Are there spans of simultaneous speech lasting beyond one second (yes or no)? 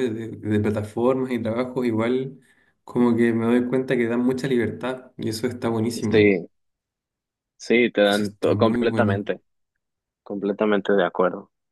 yes